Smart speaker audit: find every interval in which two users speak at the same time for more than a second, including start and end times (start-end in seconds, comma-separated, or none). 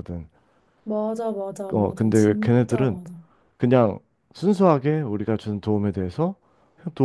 1.7-3.0